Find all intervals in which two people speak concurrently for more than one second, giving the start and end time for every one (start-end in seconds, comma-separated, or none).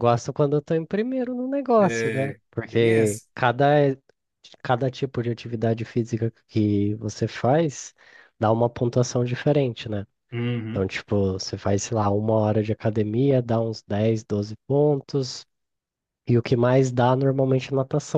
1.8-3.3